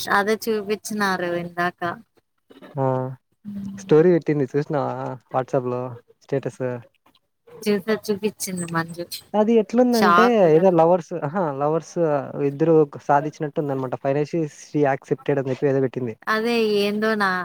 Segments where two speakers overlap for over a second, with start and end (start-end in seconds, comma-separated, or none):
none